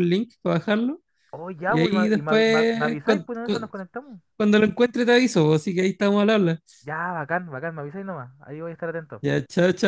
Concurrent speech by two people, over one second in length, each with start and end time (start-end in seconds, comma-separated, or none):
1.7-3.7